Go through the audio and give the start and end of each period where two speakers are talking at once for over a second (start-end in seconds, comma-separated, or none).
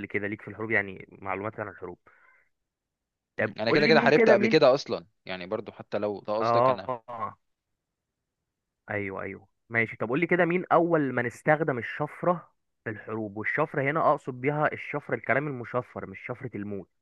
3.4-4.6